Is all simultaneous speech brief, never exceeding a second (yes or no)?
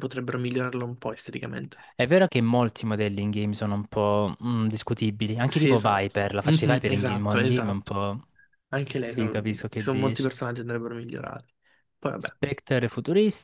no